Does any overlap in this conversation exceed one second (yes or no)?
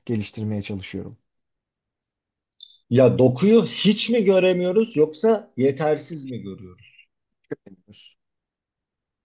no